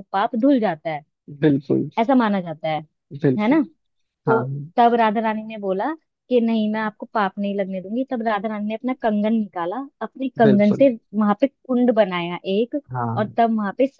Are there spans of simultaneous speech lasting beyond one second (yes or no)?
no